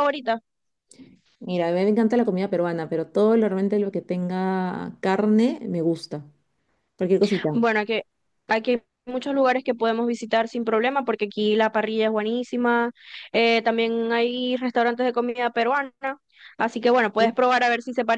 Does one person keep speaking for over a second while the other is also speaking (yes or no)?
no